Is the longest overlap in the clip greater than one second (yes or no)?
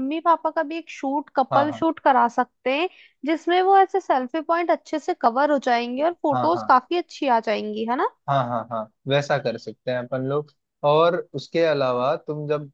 no